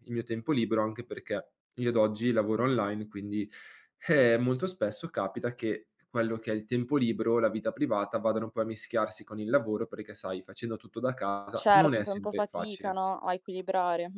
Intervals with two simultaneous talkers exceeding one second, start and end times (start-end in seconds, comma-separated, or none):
11.5-13.0